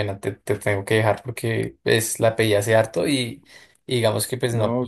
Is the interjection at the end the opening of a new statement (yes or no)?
yes